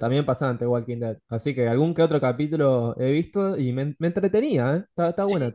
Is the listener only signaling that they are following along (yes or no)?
no